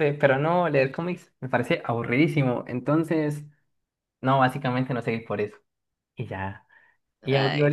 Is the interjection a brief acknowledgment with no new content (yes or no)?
yes